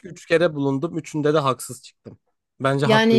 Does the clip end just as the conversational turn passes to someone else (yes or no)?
yes